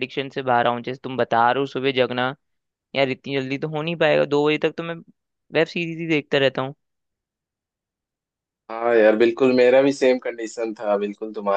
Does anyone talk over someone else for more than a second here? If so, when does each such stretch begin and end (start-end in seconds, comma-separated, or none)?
none